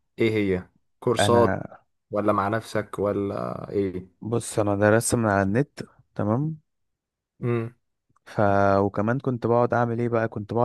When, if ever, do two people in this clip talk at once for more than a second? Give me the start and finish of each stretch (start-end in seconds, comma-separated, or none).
none